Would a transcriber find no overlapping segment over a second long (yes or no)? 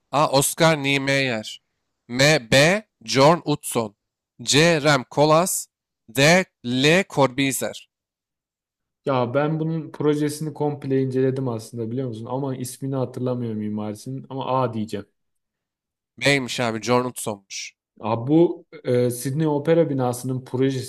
yes